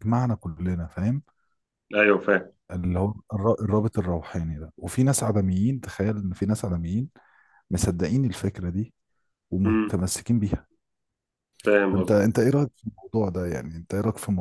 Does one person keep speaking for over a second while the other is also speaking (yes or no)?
no